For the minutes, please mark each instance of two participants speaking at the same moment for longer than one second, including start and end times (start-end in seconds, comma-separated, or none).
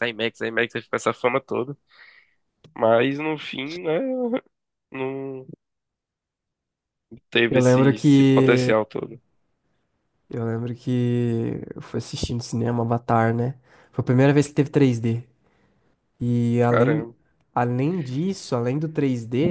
7.5-8.7